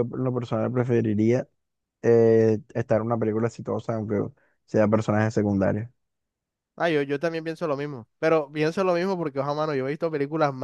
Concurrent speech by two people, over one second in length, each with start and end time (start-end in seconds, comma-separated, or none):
none